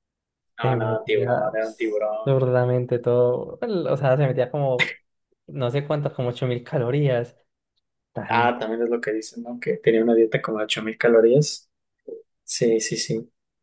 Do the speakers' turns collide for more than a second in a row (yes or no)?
yes